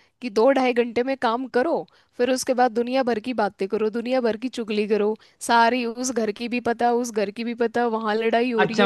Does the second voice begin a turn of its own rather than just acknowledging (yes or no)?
yes